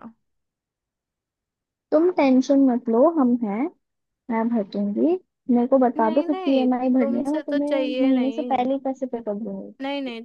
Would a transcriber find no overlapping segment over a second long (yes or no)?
no